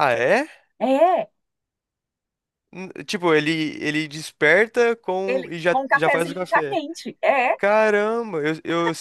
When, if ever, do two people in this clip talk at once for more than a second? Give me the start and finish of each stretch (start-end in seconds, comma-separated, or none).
5.3-6.8